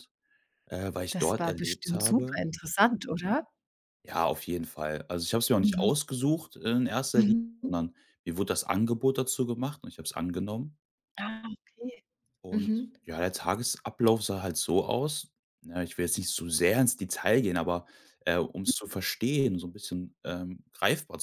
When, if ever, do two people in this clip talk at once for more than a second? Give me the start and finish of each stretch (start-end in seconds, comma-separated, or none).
1.1-2.4